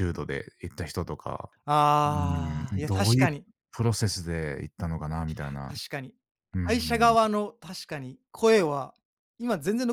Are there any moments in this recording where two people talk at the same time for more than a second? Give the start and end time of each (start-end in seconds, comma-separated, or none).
none